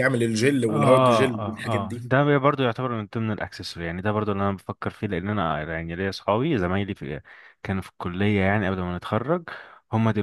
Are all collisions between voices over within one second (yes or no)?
no